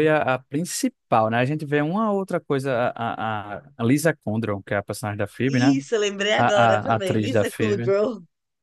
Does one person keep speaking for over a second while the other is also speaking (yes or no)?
yes